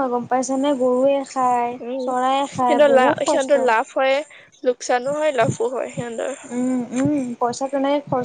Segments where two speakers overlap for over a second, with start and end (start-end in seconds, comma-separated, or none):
1.9-3.5